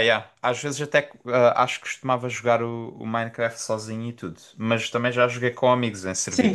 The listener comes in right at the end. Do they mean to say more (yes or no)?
yes